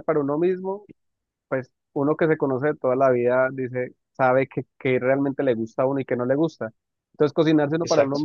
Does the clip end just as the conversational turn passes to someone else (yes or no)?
no